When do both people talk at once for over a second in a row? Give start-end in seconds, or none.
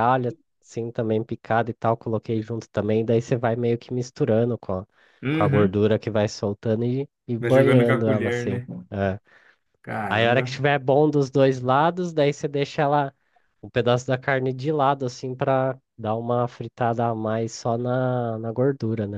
7.4-8.7